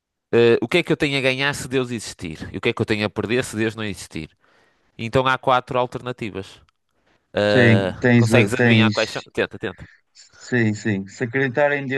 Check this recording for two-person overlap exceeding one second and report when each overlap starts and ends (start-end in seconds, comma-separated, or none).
7.5-9.0